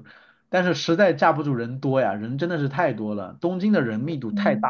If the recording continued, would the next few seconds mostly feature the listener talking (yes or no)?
yes